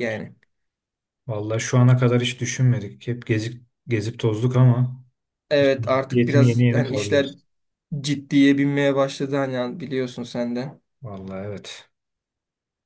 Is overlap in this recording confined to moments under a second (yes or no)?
no